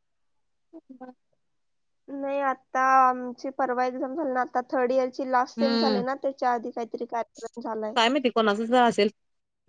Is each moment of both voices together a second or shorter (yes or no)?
yes